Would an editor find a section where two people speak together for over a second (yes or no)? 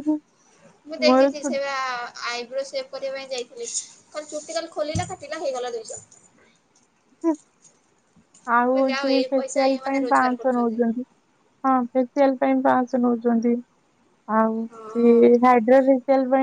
yes